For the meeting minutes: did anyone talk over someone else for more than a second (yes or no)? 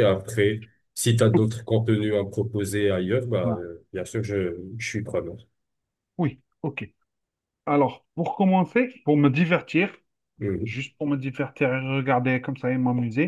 no